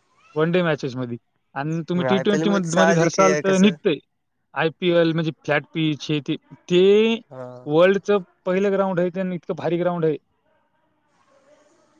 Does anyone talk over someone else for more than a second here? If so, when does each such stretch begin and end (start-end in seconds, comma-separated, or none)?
1.9-3.7